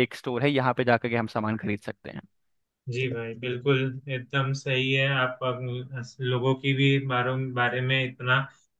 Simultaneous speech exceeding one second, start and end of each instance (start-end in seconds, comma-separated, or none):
none